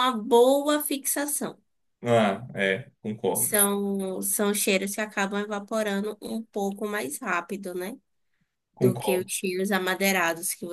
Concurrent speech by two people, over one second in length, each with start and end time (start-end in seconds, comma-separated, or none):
none